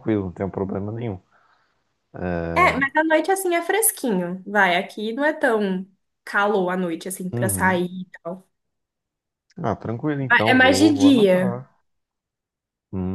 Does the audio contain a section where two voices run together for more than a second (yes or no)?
yes